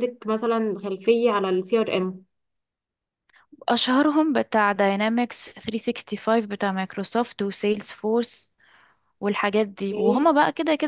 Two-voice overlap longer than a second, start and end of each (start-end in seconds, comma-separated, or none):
none